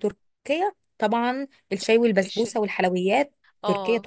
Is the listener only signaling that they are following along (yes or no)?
no